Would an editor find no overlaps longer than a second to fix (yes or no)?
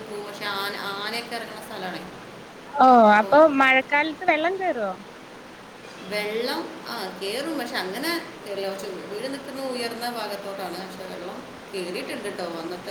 yes